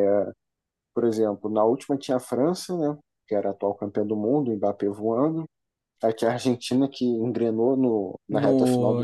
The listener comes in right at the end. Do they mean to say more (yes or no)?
yes